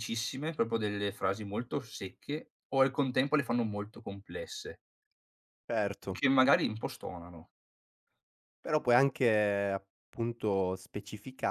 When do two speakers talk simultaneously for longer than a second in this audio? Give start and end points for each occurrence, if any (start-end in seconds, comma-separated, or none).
none